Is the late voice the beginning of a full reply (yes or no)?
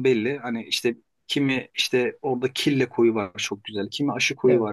no